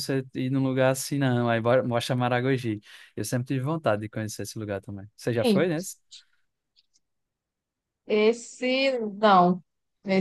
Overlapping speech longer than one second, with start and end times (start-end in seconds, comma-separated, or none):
none